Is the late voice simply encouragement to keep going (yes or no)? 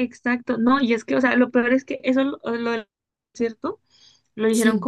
yes